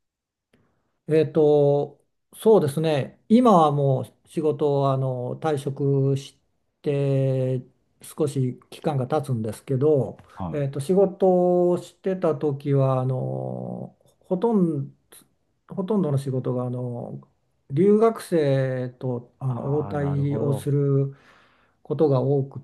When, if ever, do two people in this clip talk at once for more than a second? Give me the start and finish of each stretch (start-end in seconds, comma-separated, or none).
19.5-20.7